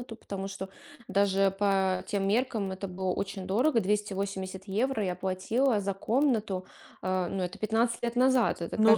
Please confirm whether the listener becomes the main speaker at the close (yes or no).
yes